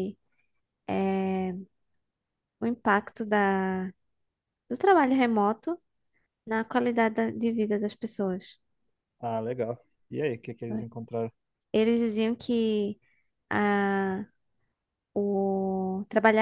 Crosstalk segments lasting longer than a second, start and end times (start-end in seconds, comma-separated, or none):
none